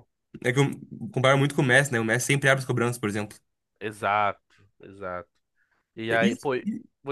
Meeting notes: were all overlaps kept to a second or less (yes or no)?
yes